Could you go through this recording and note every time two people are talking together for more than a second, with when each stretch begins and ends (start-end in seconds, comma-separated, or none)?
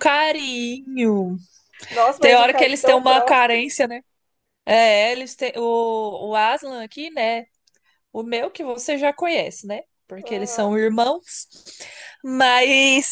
2.2-3.8